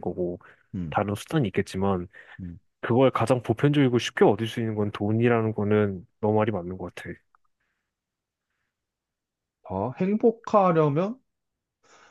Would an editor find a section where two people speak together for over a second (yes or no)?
no